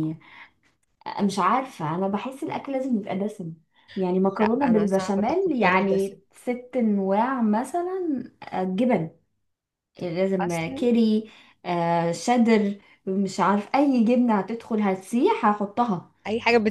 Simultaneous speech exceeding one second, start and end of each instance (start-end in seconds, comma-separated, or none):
4.2-6.2